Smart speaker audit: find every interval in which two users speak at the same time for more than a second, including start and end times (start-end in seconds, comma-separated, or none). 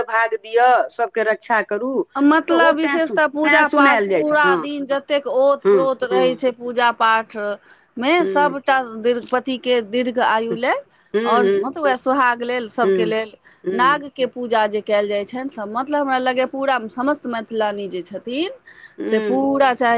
2.5-4.6